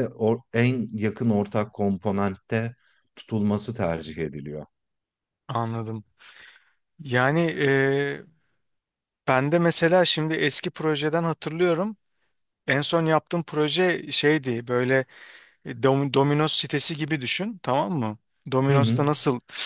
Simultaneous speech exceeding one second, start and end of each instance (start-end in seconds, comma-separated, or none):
none